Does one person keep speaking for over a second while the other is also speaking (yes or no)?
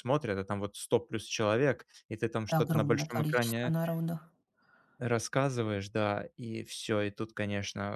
yes